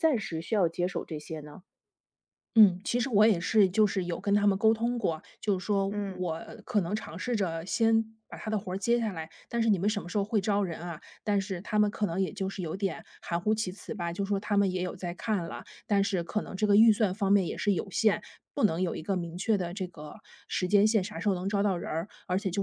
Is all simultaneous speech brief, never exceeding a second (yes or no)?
yes